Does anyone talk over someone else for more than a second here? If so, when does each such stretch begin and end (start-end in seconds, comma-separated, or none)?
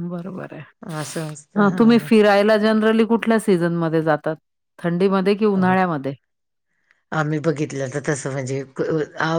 none